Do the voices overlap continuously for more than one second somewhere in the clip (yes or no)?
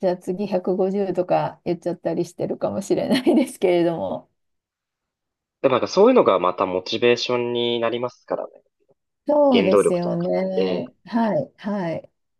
yes